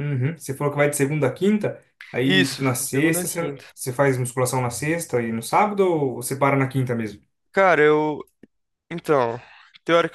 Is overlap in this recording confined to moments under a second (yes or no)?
no